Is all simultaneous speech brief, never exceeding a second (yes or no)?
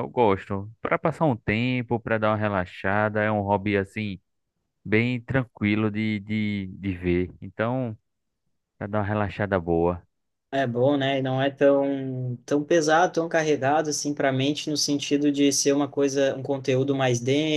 yes